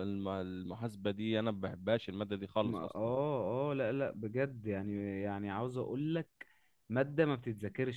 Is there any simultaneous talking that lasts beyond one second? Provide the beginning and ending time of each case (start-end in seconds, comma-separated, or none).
none